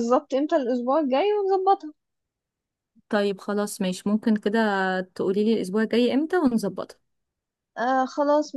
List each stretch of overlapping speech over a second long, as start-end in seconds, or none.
none